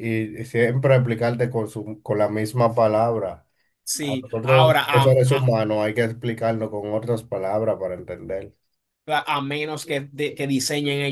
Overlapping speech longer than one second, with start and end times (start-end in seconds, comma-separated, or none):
4.0-5.5